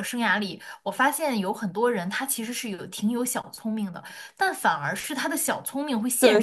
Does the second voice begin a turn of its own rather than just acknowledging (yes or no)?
yes